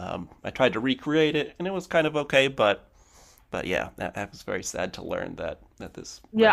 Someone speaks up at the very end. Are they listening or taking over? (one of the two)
taking over